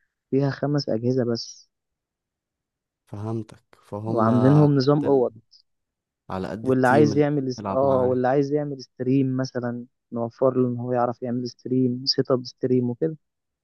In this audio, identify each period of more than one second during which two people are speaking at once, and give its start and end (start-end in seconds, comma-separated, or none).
4.1-5.3, 6.6-8.2